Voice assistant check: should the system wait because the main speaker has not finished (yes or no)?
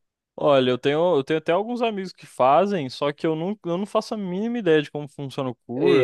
no